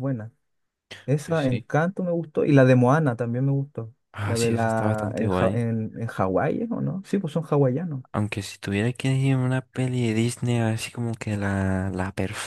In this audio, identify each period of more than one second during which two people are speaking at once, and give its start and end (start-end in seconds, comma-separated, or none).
4.1-5.6